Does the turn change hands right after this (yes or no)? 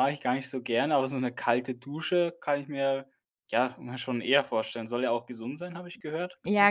yes